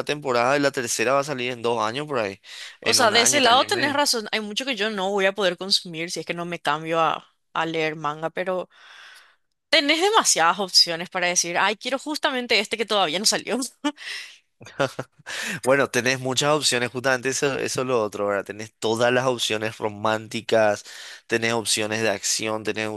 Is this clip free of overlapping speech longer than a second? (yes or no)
no